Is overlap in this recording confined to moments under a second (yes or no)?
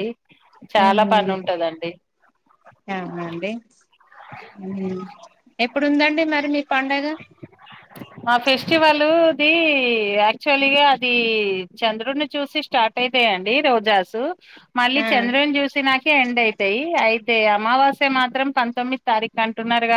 yes